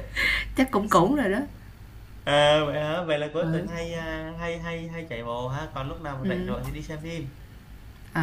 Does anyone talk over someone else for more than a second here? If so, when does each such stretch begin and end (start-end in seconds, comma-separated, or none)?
none